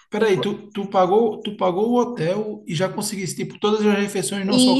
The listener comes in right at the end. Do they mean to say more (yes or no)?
yes